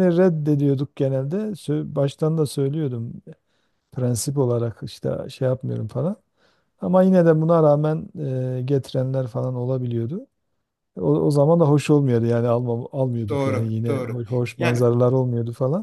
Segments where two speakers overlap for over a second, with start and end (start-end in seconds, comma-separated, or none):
13.3-14.9